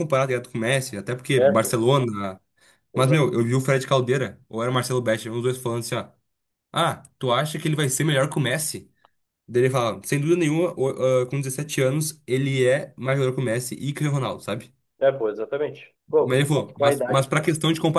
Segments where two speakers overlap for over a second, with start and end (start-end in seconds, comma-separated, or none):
16.2-17.4